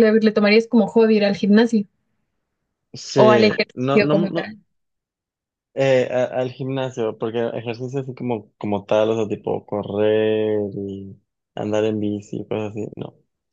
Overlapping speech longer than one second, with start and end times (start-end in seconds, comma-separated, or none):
3.1-4.5